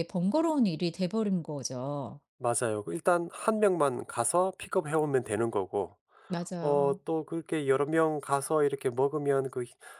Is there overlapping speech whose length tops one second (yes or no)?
no